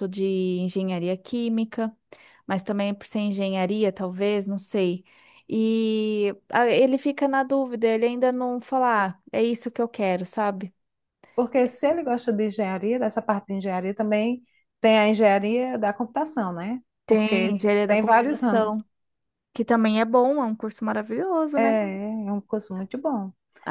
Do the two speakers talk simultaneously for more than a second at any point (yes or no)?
yes